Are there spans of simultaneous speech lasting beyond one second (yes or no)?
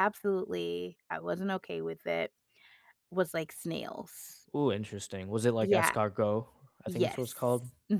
no